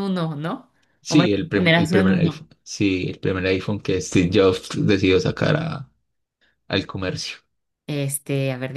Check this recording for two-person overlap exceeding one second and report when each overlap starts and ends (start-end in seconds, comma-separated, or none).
1.1-2.5